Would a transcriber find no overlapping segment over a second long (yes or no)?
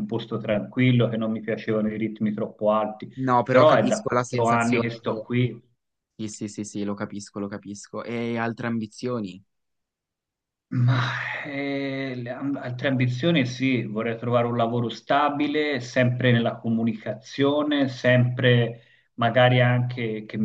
no